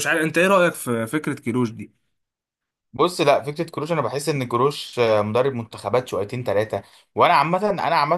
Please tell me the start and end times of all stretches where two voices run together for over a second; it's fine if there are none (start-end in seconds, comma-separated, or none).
none